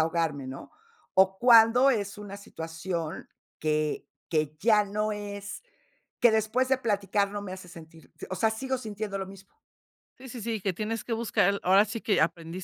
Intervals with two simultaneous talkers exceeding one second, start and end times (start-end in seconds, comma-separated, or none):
none